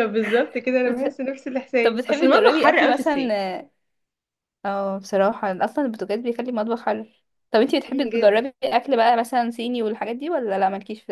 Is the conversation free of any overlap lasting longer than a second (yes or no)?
no